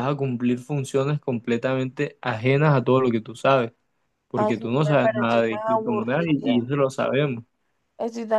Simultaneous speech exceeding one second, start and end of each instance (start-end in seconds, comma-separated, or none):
4.3-6.6